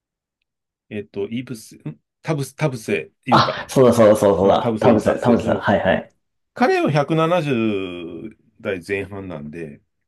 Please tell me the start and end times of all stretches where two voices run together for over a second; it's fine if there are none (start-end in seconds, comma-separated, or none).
4.4-5.7